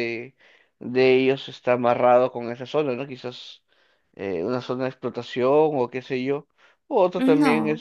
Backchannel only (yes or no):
yes